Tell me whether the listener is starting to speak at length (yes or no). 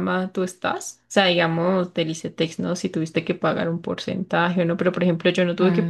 no